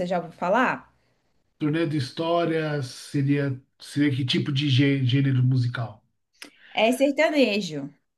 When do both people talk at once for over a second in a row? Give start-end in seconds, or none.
none